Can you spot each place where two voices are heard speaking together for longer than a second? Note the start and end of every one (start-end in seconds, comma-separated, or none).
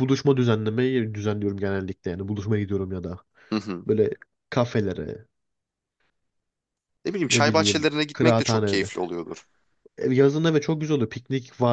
7.3-8.9